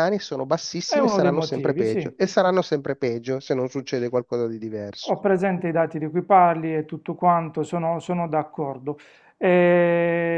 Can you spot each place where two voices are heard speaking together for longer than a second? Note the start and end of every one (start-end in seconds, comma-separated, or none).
0.9-2.1